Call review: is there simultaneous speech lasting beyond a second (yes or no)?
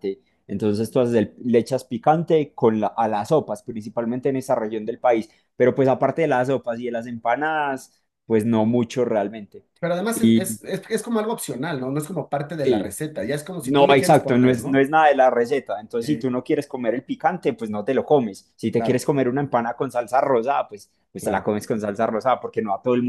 yes